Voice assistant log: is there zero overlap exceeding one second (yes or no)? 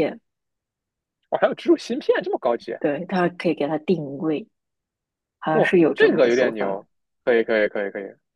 no